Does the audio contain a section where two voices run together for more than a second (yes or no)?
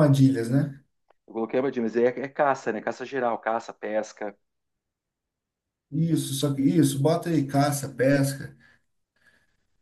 no